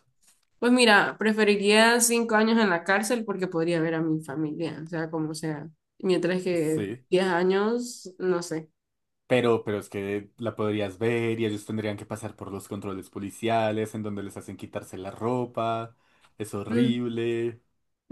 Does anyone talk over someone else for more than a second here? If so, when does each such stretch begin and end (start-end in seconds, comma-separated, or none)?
none